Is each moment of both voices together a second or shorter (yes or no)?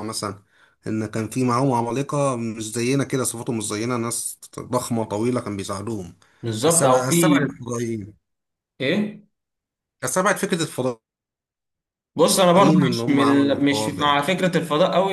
no